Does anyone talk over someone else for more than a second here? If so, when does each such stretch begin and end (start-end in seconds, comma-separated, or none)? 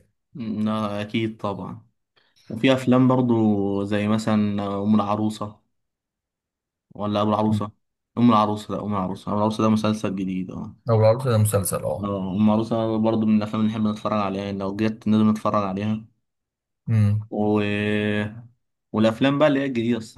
none